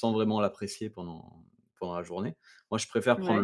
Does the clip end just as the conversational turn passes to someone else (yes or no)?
no